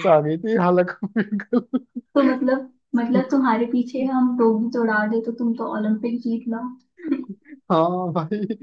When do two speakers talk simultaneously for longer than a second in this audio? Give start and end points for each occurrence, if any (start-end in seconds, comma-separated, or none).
none